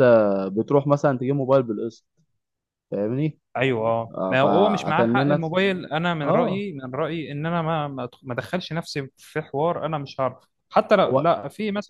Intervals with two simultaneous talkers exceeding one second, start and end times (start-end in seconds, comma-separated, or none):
4.1-5.4